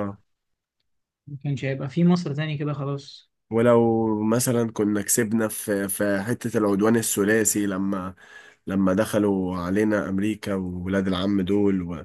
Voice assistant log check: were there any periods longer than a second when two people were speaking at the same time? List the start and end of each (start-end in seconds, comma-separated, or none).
none